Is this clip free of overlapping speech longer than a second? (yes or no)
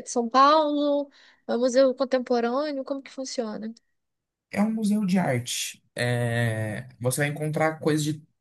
yes